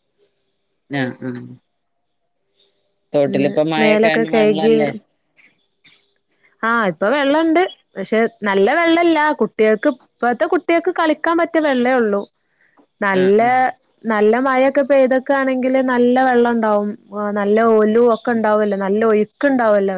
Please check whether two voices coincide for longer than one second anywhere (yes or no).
yes